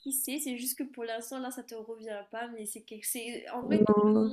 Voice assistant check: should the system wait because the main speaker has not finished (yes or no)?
yes